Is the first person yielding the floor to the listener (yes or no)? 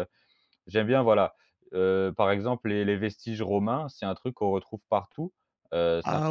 no